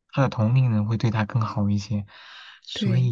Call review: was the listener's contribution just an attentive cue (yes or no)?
yes